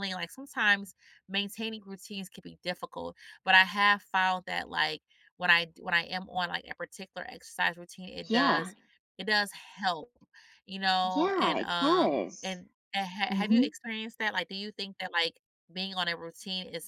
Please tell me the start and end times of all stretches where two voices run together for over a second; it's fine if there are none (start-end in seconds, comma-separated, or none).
11.0-12.6